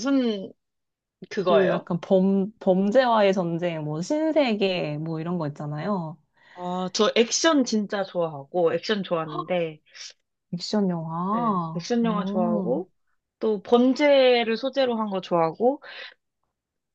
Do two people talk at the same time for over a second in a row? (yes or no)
yes